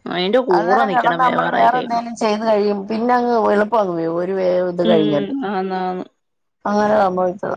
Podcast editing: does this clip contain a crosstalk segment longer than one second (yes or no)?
yes